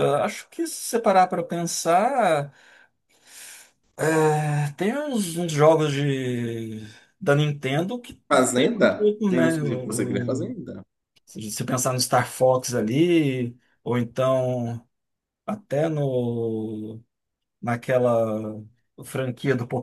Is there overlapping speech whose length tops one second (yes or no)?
yes